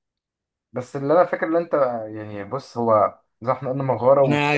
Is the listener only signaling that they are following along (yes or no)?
no